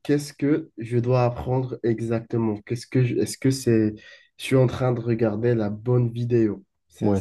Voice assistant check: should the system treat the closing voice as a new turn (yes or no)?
yes